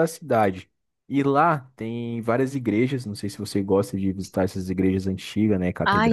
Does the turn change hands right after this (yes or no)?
yes